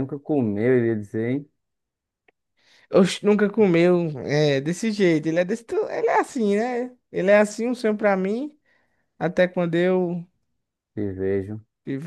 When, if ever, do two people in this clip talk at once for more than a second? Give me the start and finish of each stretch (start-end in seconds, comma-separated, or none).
none